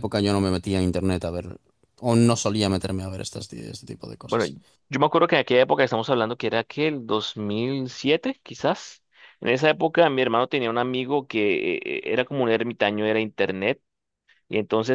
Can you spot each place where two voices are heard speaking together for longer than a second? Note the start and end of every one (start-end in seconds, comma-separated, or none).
none